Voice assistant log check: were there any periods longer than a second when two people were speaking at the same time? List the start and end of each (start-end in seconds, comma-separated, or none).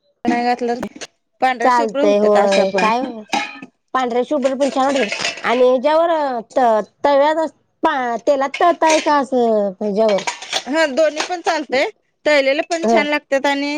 1.6-2.9